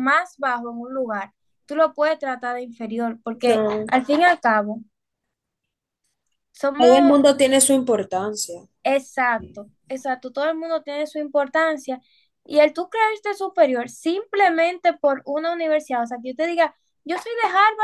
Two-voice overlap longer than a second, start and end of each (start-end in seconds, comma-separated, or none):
none